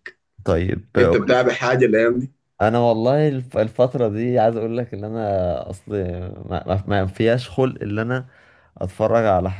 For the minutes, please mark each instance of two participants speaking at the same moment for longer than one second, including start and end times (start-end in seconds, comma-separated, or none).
none